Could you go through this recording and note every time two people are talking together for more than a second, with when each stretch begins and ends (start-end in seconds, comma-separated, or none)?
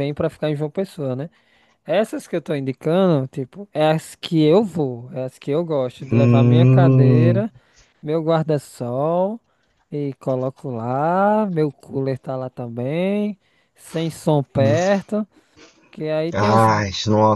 6.1-7.4